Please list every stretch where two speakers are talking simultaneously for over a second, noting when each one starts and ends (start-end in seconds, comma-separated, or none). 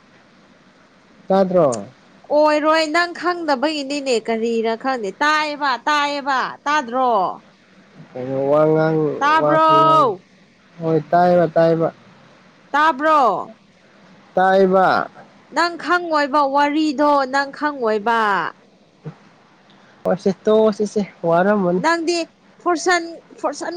none